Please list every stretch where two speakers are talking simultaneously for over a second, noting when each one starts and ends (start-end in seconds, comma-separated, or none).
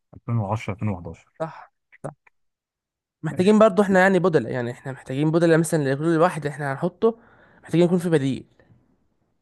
none